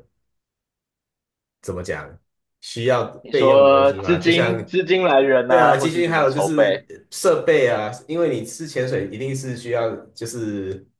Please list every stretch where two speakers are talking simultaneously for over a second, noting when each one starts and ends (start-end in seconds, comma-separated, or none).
3.2-4.5, 5.5-6.9